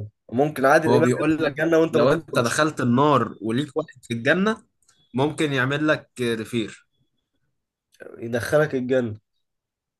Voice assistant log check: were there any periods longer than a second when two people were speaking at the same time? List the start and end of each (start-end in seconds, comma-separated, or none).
0.9-2.6